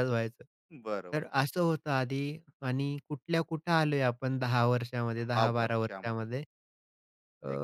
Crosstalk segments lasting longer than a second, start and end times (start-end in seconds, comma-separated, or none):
5.2-6.4